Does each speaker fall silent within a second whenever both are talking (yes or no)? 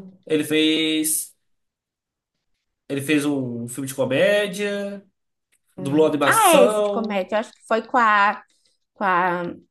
no